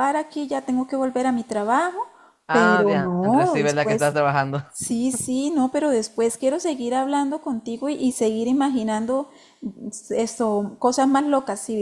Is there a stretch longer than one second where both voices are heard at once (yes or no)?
yes